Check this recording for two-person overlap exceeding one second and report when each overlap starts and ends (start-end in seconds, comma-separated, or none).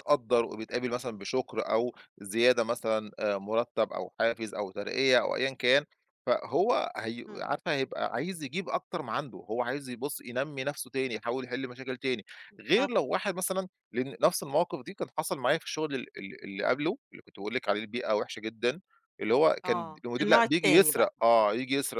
19.6-21.5